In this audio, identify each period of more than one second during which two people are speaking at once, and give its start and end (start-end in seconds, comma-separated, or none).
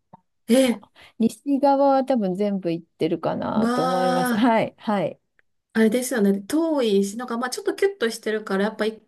none